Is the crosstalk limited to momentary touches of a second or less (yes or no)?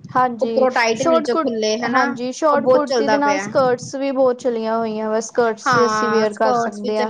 no